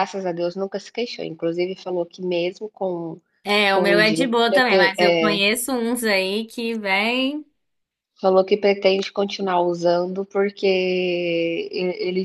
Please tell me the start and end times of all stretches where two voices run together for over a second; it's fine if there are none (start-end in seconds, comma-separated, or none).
3.7-5.4